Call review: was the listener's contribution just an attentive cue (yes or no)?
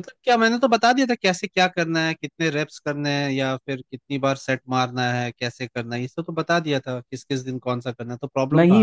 no